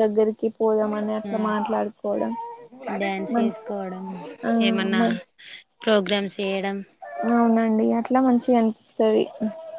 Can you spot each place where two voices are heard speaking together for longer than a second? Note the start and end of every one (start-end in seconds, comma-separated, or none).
none